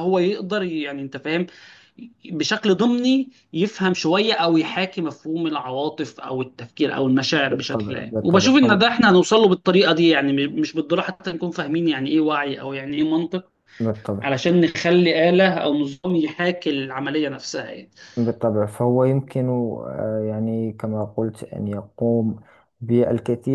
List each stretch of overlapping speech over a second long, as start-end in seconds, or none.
7.4-8.8